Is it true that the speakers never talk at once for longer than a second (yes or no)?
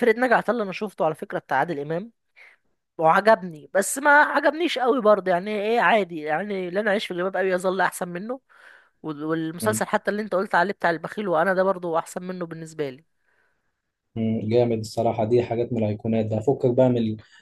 yes